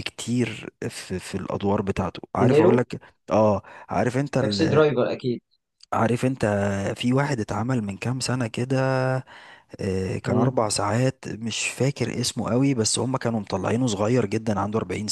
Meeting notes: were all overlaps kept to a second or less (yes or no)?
yes